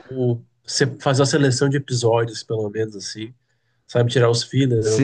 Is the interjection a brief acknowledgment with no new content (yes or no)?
no